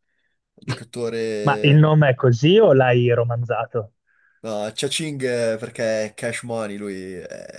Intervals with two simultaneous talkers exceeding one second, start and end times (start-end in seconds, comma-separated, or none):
none